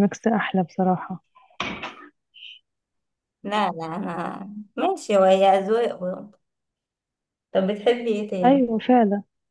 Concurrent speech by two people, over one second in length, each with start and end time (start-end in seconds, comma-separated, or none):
none